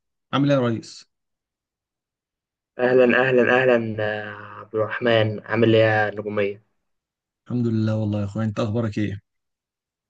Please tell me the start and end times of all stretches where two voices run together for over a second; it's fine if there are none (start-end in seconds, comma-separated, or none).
none